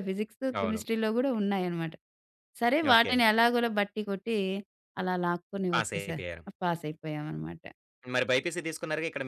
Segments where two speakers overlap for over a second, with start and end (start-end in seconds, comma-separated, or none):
none